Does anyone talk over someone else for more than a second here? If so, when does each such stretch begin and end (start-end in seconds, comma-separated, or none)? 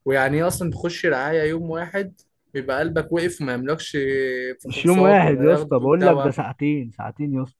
4.7-6.4